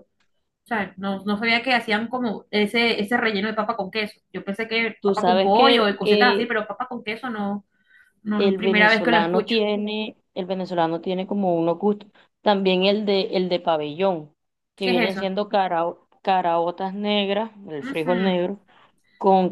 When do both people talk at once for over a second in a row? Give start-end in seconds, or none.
5.0-6.5, 8.4-9.6